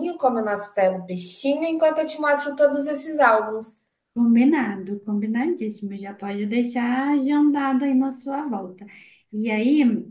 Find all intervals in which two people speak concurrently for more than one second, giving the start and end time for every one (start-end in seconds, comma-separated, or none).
none